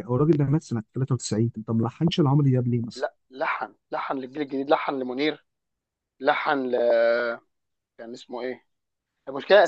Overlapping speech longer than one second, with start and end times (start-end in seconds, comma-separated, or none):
none